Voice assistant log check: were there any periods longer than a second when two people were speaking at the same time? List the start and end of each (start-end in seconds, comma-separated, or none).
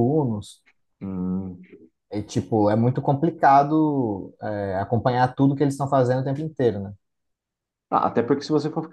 none